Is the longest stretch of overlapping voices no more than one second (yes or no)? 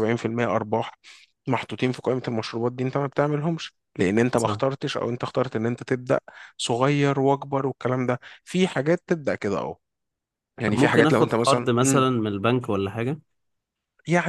no